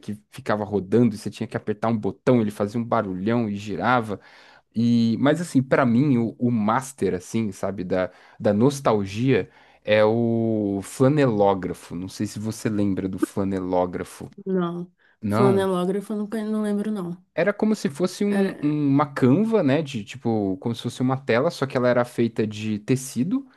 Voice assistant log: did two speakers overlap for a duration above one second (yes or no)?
no